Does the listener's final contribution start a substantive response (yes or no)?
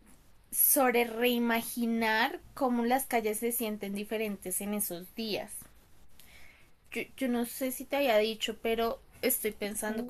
no